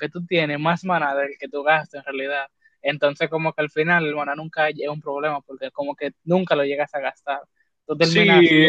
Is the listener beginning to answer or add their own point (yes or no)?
no